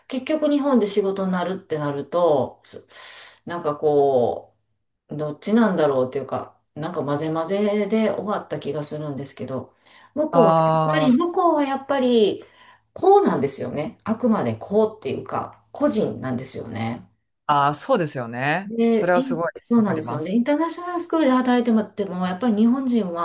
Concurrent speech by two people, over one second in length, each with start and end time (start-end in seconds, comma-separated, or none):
18.6-20.4